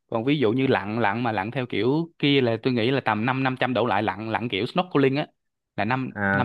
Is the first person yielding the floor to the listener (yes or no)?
yes